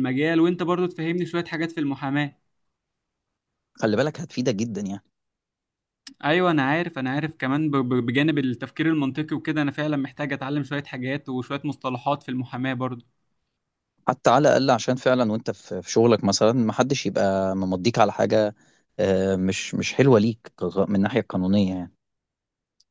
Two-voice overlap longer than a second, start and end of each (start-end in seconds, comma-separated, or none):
none